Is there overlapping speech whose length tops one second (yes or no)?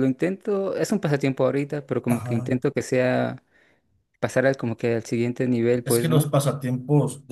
no